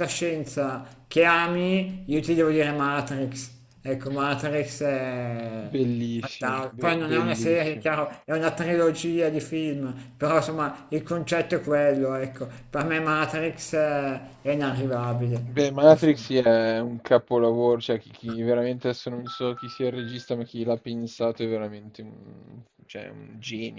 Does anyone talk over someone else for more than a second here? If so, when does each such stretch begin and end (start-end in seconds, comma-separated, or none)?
6.1-7.9